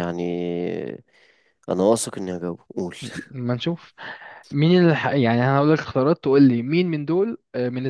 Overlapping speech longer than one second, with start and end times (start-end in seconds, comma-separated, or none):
none